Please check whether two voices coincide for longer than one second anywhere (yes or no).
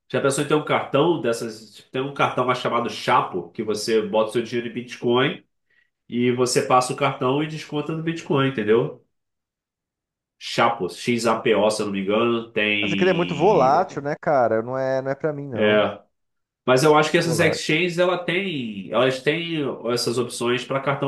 yes